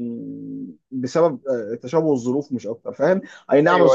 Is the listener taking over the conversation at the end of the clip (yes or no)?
no